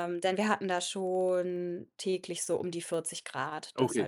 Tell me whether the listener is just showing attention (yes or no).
no